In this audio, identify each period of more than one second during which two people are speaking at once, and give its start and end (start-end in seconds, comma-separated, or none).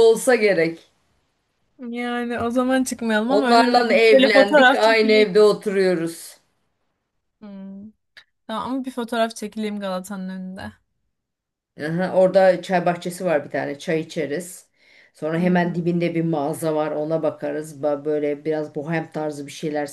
3.3-5.3